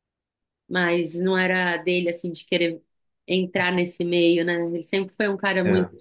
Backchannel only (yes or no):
yes